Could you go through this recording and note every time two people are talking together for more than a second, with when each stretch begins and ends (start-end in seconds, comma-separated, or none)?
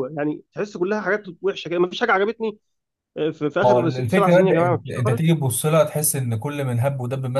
3.6-5.2